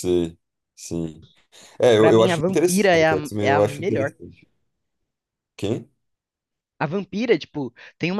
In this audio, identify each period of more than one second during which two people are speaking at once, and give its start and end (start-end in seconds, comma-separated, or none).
2.0-4.1